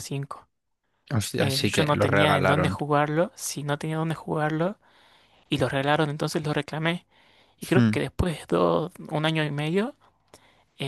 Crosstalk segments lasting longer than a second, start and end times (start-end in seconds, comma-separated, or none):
1.4-2.8